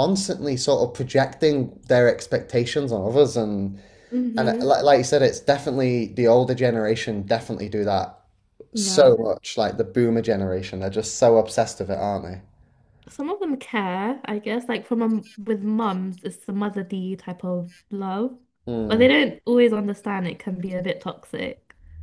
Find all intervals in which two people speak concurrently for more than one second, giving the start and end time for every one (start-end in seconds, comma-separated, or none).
none